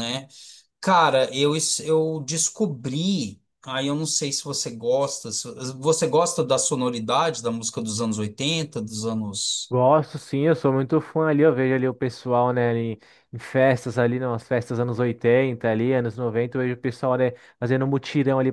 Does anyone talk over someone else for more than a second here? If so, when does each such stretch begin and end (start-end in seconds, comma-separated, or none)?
none